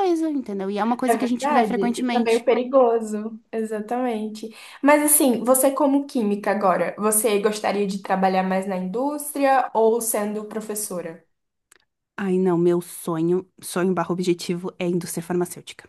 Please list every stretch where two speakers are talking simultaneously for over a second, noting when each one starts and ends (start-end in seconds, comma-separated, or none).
1.0-2.4